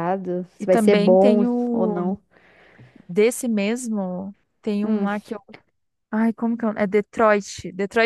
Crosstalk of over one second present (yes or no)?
yes